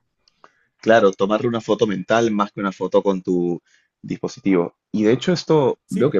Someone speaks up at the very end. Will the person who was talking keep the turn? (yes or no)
yes